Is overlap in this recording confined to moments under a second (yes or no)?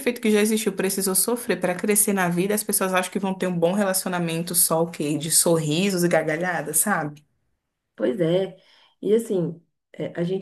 yes